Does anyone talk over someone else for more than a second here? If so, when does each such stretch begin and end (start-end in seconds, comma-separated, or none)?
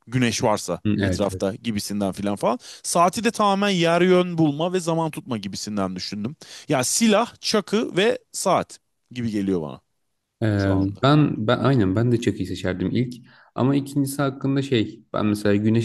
none